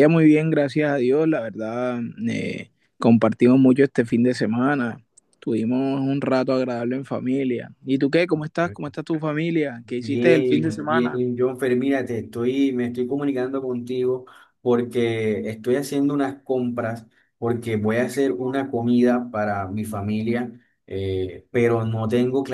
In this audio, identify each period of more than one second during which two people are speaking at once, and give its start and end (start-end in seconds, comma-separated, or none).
9.8-11.2